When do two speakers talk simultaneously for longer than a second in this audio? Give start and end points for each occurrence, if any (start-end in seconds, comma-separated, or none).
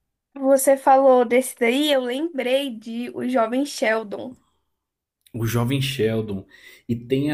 none